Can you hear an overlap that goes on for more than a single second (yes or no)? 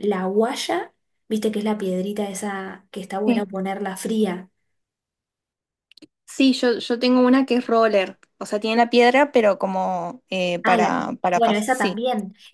yes